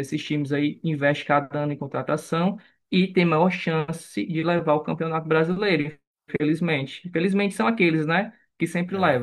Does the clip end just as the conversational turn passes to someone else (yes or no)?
no